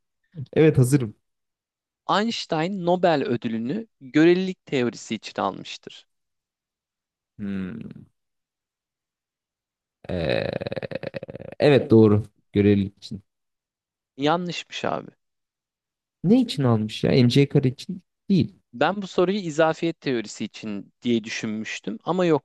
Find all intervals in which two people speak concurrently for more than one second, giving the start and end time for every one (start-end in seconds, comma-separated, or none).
none